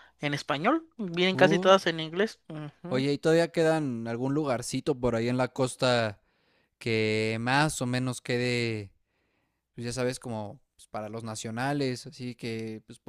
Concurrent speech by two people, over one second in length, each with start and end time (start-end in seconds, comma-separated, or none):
none